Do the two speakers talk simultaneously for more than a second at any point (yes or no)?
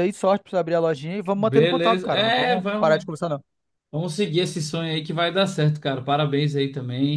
yes